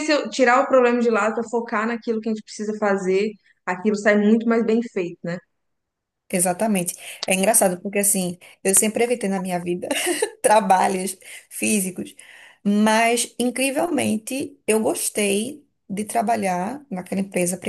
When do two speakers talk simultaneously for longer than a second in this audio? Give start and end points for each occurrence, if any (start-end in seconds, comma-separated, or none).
none